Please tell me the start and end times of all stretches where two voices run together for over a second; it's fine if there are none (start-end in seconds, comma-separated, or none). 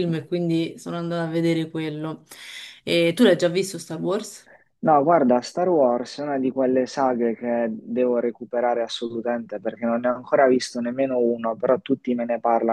none